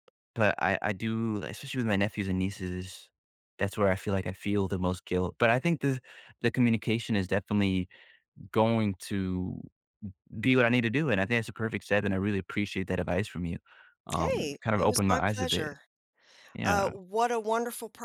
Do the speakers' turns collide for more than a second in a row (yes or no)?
yes